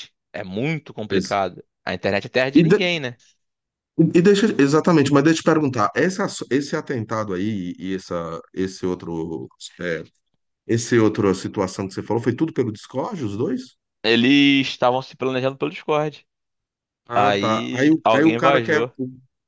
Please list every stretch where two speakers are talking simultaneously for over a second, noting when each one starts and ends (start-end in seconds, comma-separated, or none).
17.1-18.9